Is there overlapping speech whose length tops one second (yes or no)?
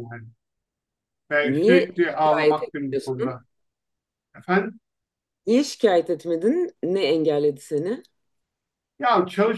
yes